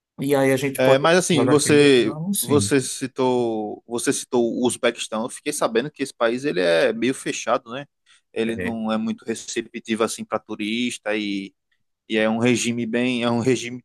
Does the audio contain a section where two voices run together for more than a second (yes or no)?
yes